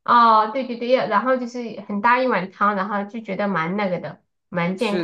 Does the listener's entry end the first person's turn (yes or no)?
yes